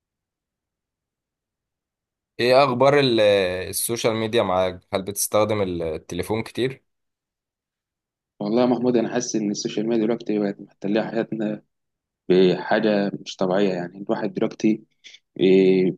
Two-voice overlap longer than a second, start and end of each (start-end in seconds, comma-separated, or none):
none